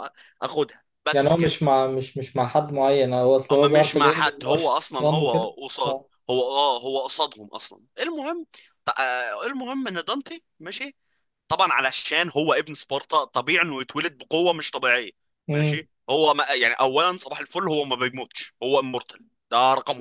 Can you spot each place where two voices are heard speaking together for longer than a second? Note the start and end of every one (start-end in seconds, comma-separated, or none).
3.5-6.1